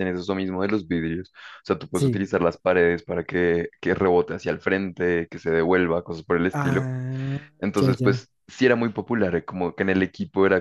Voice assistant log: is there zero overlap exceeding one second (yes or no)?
yes